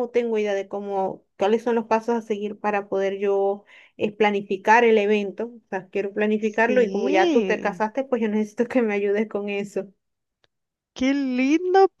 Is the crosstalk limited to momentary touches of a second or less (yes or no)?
no